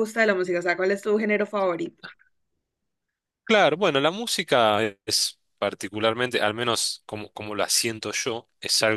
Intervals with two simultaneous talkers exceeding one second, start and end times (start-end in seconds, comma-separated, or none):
none